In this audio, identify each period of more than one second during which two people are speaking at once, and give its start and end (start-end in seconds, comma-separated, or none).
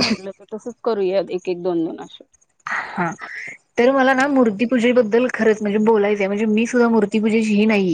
none